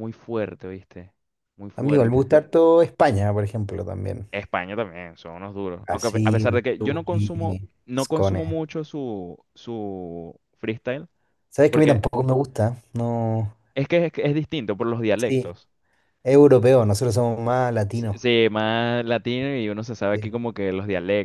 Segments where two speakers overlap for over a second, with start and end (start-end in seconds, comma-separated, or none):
5.8-8.4